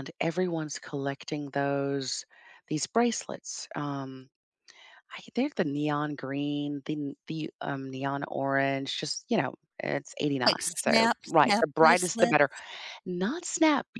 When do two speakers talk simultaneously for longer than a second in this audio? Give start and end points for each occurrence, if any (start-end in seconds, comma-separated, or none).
10.4-12.4